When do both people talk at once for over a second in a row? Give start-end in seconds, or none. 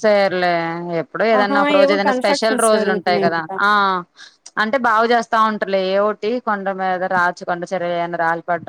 1.4-3.5